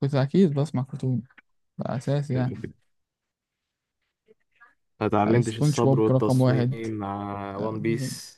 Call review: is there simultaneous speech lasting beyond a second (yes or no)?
yes